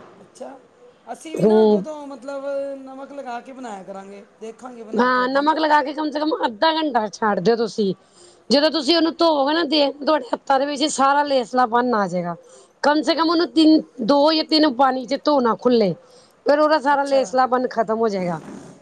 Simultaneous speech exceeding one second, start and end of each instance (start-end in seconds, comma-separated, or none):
none